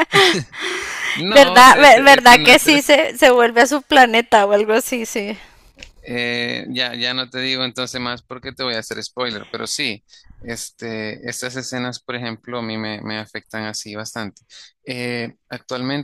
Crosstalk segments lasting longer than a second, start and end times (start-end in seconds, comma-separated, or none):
1.3-2.8